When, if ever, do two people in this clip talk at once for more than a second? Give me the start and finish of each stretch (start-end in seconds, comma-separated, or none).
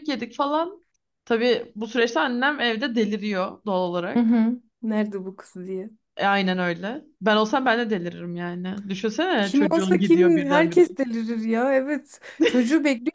9.4-10.8